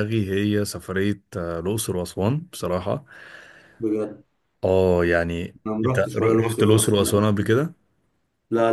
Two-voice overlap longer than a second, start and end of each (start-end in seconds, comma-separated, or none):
5.7-7.2